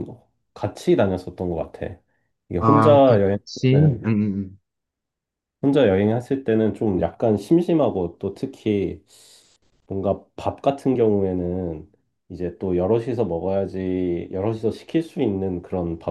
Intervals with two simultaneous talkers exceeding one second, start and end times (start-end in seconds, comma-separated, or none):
2.6-4.1